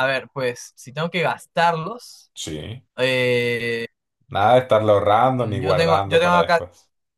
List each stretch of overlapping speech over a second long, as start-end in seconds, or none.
5.3-6.6